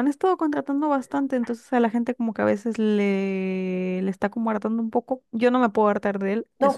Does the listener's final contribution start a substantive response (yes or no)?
yes